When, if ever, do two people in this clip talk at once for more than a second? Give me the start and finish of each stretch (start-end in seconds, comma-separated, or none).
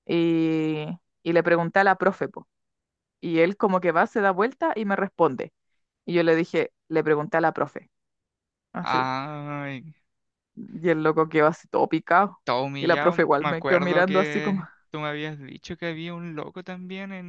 12.8-14.7